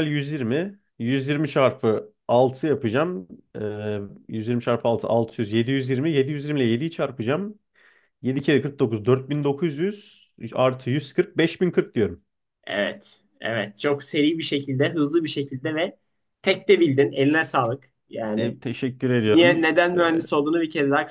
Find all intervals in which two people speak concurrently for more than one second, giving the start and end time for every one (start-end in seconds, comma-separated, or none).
none